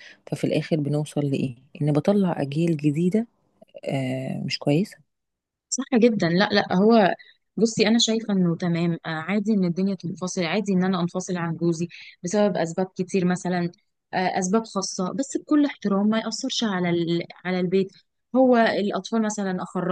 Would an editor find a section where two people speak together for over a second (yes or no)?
no